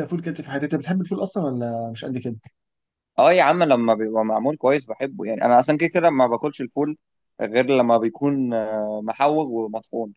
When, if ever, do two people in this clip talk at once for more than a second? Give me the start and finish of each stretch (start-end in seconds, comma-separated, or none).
none